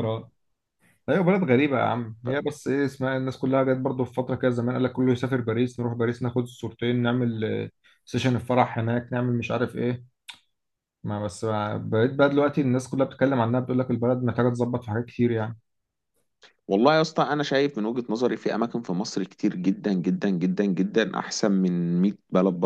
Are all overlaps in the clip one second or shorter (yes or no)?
yes